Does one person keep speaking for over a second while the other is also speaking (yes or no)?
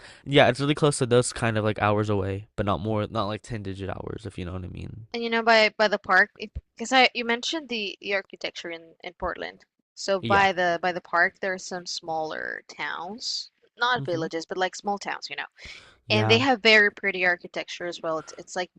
no